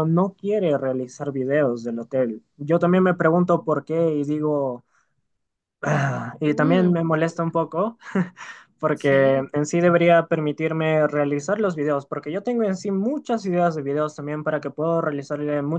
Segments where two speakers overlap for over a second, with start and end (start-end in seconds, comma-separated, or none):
6.4-7.7